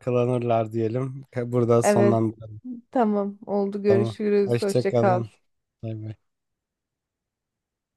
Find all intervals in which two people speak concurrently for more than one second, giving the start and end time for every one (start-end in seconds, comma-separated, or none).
3.9-5.2